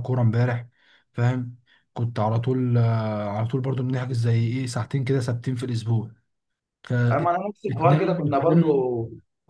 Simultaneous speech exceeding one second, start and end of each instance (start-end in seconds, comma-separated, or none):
7.1-8.9